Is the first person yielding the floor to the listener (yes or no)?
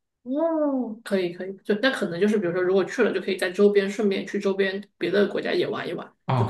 yes